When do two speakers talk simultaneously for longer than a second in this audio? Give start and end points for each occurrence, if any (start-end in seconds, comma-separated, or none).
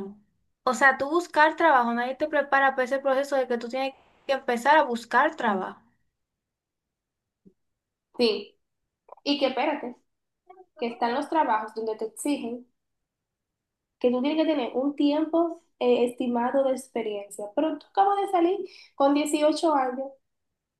none